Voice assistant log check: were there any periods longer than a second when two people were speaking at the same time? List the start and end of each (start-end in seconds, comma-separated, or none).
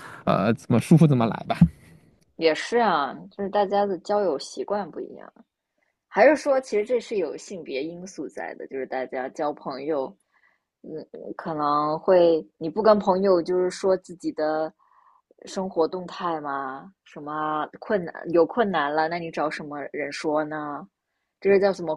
none